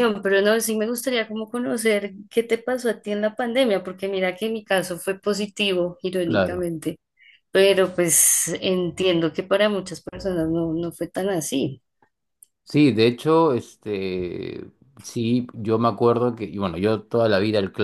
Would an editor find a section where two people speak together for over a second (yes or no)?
no